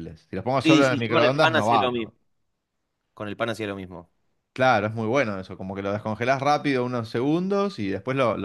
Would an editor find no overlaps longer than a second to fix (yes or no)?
no